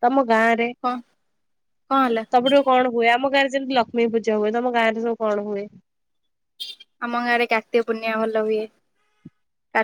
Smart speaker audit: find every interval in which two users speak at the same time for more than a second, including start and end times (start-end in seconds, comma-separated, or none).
none